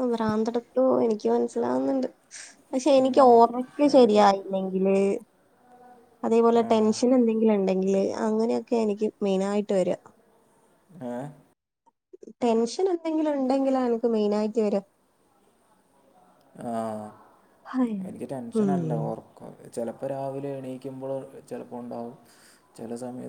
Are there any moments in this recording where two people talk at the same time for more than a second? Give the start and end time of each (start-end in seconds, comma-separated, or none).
2.8-4.2